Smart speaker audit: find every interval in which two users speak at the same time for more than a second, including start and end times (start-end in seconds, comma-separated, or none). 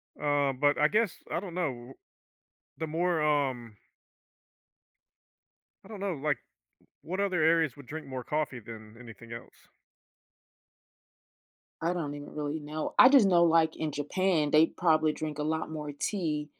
none